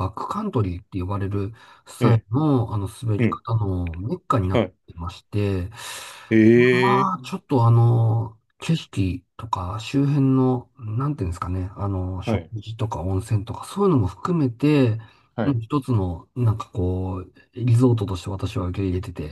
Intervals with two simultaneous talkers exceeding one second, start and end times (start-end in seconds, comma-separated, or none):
none